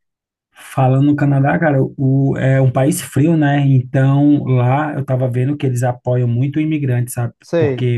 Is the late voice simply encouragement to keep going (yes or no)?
yes